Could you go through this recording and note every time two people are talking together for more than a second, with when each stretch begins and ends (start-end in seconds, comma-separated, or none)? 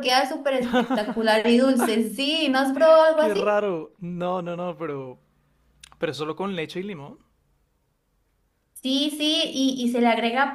none